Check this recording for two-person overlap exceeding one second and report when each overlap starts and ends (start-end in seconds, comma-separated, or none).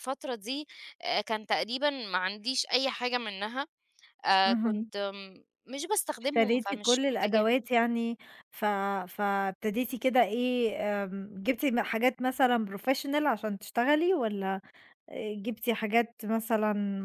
6.2-7.5